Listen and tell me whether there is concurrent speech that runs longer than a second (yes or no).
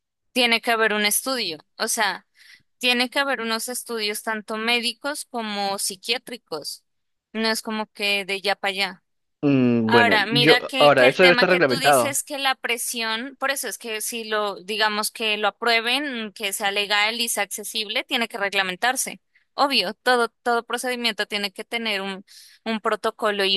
yes